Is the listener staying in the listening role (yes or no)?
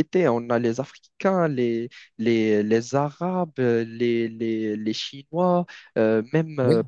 yes